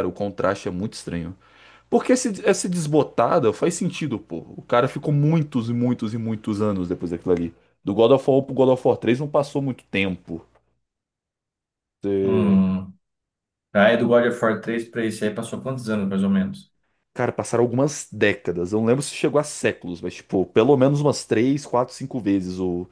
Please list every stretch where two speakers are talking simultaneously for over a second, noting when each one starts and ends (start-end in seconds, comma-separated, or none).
none